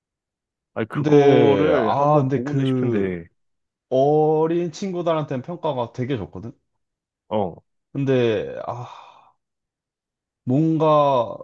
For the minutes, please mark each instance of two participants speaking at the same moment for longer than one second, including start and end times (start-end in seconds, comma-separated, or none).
0.9-3.1